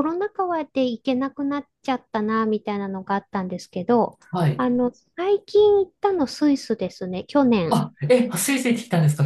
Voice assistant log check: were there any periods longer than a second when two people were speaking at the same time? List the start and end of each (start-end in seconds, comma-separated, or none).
none